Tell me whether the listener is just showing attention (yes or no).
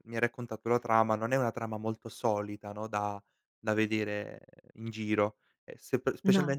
yes